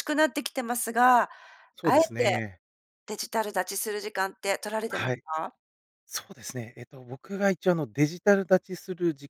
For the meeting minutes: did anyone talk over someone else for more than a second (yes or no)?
no